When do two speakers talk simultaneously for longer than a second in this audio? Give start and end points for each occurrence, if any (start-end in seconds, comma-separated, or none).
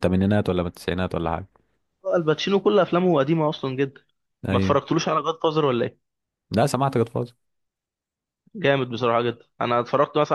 none